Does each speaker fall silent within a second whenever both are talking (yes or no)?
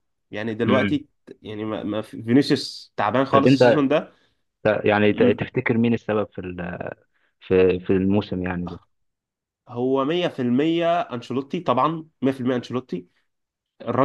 yes